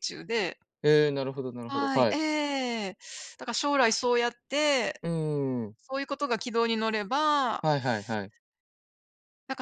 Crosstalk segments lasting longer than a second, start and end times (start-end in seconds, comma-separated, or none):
none